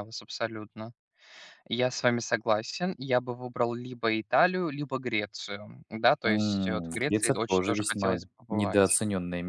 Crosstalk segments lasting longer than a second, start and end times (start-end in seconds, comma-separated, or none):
6.2-9.0